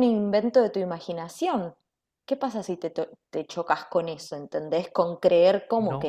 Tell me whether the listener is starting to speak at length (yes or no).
yes